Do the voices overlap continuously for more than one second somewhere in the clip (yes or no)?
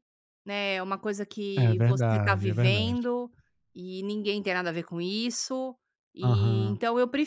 yes